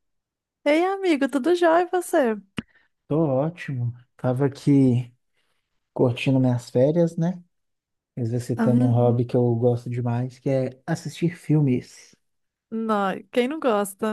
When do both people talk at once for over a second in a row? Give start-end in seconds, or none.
none